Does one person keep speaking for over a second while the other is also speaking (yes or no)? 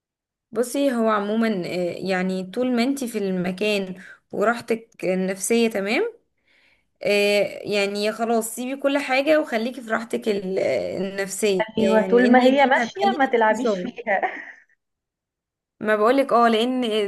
yes